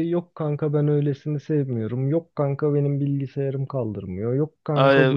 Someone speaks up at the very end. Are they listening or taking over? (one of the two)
taking over